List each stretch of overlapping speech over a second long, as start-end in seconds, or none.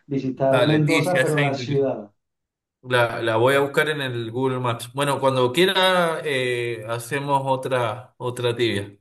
0.5-1.9